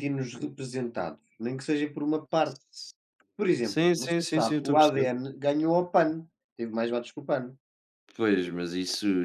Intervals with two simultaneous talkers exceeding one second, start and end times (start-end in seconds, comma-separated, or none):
3.6-5.1